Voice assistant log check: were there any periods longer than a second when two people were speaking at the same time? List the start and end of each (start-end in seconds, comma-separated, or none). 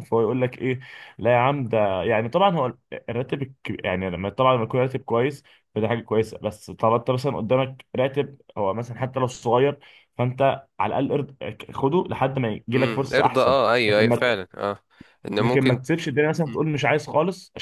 12.7-14.4